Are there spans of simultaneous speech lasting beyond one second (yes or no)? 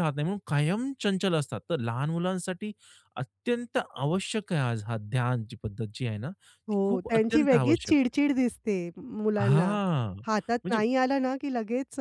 yes